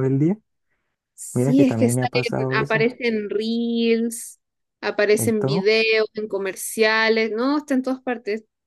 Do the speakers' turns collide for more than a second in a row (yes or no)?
yes